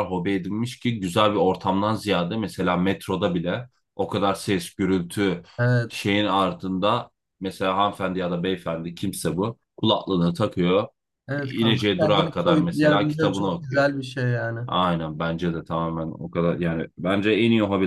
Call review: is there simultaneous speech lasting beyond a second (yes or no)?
yes